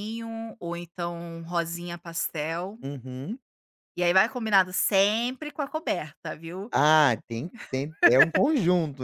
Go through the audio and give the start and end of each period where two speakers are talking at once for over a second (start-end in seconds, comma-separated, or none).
none